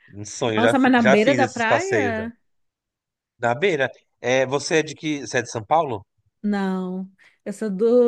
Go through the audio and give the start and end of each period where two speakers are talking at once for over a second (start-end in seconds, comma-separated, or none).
0.6-2.2